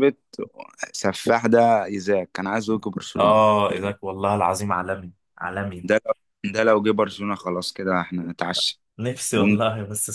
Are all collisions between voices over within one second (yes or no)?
yes